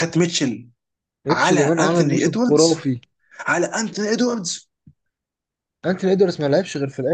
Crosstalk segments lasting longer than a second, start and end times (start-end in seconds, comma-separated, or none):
1.3-2.9